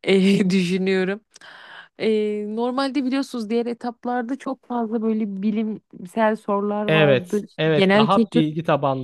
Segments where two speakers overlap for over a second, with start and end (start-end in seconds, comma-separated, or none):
6.9-8.4